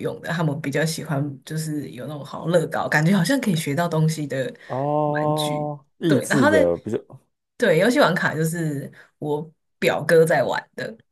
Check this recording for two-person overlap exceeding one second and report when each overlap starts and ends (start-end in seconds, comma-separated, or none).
5.0-6.5